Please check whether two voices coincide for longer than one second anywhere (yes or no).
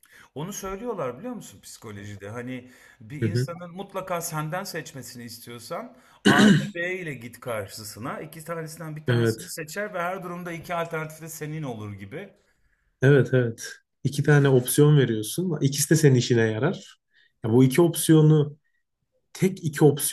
no